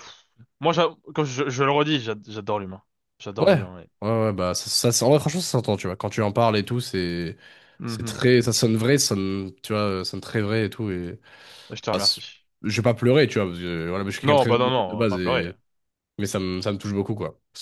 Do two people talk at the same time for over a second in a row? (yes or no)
yes